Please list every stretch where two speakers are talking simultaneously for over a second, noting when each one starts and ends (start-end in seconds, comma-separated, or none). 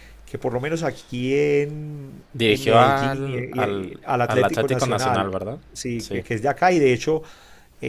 2.3-5.3